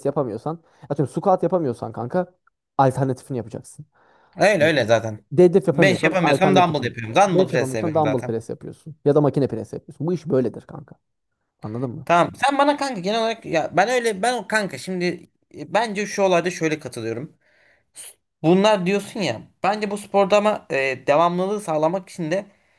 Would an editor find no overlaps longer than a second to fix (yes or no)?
no